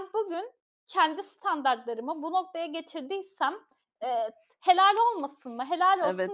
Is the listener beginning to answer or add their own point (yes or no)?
yes